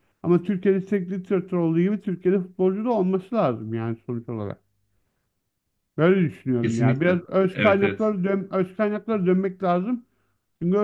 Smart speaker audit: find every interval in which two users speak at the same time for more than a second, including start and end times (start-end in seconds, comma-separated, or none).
6.6-8.1